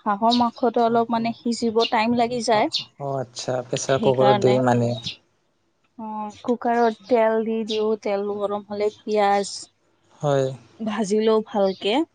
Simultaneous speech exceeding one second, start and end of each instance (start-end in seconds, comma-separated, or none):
none